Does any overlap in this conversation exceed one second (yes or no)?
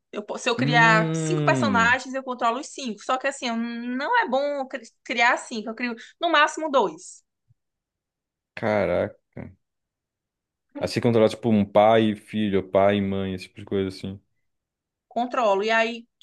yes